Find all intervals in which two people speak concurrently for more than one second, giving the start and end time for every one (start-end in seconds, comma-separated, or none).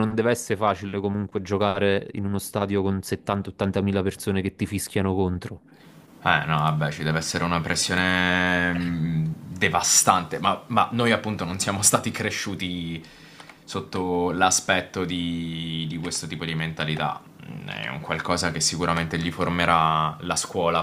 none